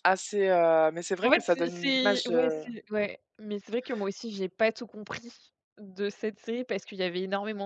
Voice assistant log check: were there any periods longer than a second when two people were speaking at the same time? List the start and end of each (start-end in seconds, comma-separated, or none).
1.2-2.6